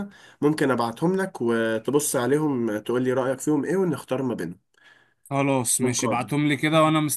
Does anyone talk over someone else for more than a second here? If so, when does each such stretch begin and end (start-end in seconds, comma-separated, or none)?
none